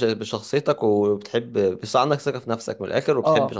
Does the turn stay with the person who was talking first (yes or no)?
no